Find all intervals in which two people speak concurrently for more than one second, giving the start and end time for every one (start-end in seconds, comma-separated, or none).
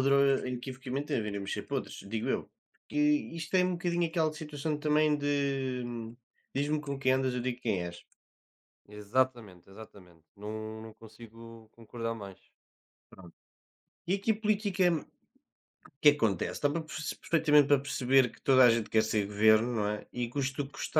none